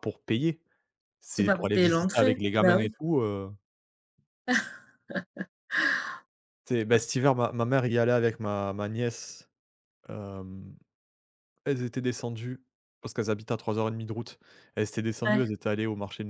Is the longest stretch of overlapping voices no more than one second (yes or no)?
no